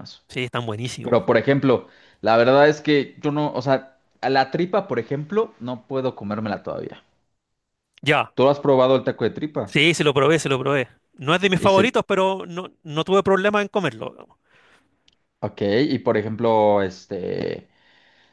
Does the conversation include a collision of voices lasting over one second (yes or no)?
no